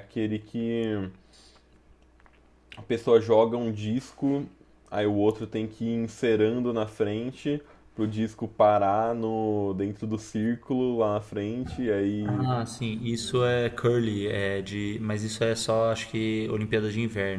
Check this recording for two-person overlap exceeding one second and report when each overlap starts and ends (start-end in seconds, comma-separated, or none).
none